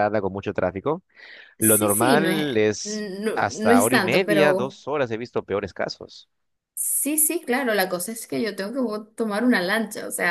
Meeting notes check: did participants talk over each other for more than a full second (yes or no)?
yes